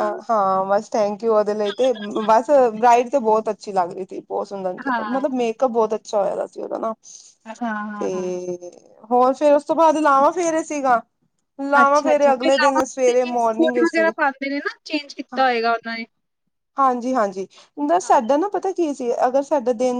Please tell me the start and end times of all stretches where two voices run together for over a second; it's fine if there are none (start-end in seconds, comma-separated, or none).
none